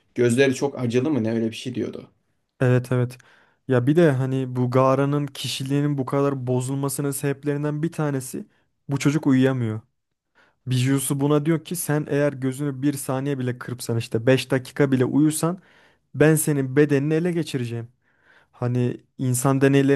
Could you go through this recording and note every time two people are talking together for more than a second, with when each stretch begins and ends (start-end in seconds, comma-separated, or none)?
none